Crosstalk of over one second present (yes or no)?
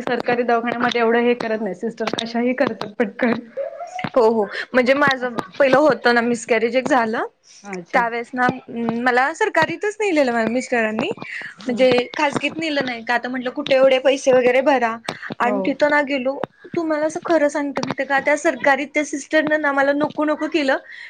no